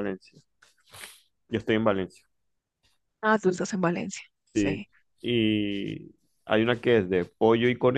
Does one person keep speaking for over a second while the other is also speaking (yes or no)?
no